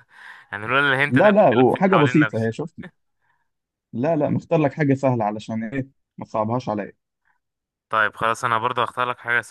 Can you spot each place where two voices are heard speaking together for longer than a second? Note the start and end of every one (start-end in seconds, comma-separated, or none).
1.1-2.5